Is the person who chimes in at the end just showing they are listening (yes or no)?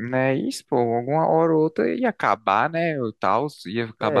no